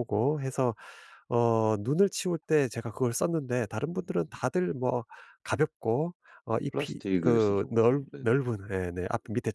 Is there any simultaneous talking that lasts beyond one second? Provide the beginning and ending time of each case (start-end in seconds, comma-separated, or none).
6.7-8.3